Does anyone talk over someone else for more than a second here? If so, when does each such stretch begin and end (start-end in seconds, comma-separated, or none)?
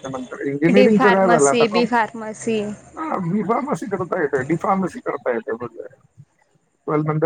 0.8-2.6